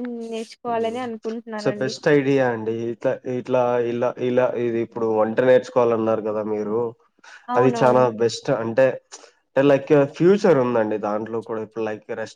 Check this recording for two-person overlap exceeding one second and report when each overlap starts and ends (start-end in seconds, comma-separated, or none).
none